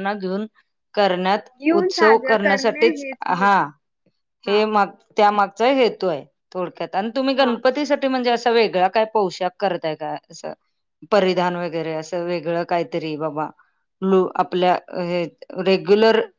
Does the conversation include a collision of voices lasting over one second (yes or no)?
yes